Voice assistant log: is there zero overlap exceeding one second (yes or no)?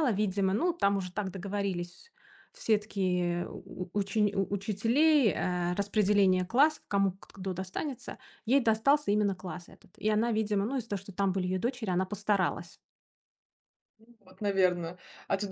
yes